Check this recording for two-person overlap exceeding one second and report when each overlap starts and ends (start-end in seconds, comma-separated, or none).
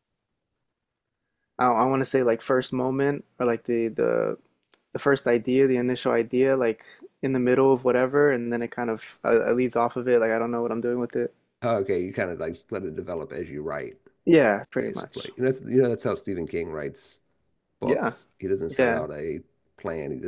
none